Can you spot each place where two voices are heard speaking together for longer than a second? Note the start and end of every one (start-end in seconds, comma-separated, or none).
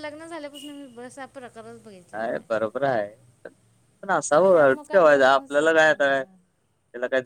4.5-5.9